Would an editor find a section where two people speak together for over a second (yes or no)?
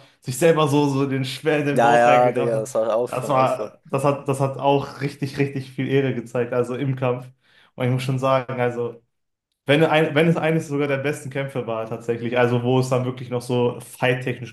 yes